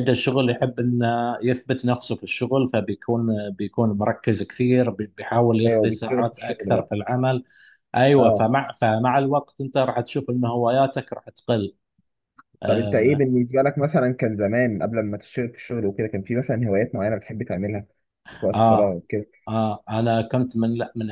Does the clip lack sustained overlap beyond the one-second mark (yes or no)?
no